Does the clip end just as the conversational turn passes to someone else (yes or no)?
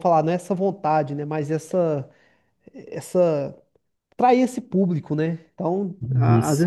no